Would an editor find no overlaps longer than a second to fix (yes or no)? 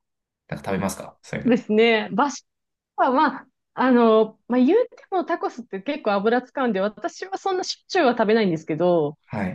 yes